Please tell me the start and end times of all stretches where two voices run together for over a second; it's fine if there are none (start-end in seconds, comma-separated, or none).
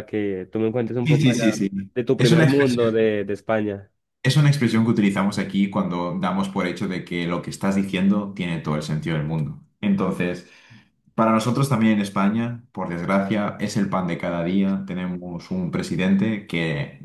1.0-2.9